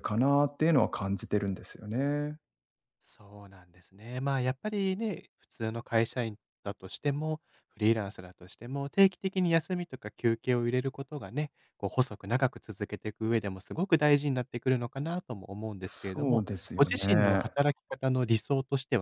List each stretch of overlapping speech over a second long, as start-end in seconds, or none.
15.8-17.4